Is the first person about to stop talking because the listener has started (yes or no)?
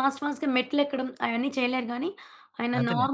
no